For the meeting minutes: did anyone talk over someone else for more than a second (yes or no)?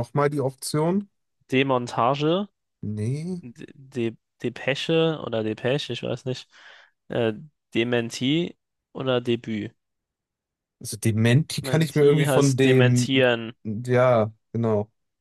yes